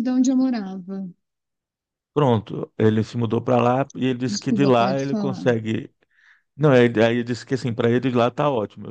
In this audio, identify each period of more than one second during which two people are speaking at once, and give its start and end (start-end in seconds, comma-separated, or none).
4.3-5.5